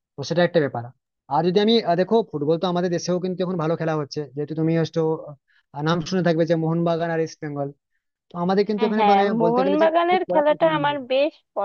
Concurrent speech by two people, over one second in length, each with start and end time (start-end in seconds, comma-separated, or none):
8.8-11.1